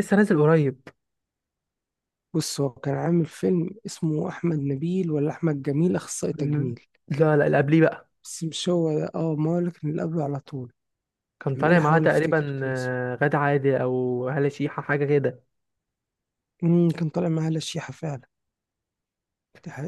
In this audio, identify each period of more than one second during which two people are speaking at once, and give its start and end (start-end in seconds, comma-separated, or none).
11.6-13.0